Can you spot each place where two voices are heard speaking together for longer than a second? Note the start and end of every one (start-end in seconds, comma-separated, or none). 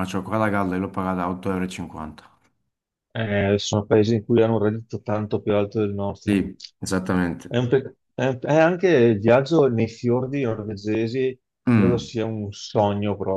none